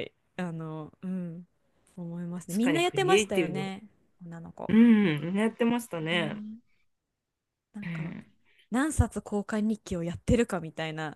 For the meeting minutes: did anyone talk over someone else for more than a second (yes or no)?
yes